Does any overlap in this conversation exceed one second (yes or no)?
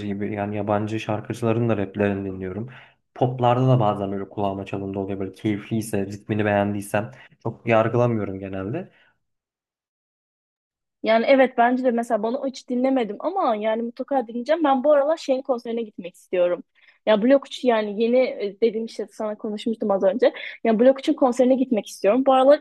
no